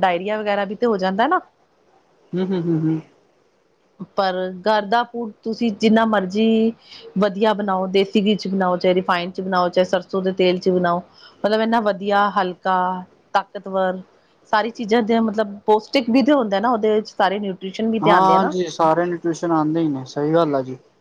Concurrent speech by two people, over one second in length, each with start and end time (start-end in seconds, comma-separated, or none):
none